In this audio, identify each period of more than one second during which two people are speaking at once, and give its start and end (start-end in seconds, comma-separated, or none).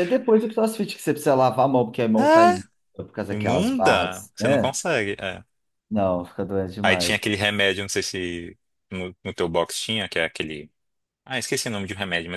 3.3-4.8